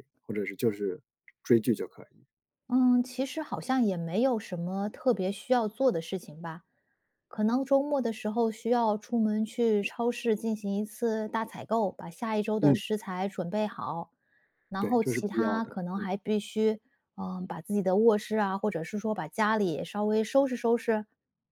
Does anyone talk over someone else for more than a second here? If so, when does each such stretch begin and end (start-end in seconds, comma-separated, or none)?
14.8-16.1